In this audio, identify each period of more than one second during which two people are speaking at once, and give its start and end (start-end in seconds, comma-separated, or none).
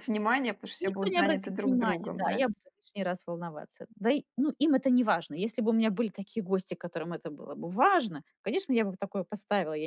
0.8-2.4